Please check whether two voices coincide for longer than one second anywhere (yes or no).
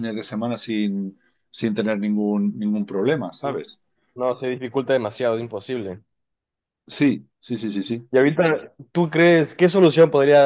no